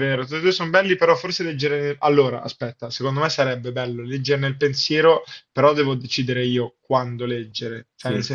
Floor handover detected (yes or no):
no